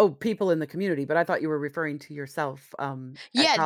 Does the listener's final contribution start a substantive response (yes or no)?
yes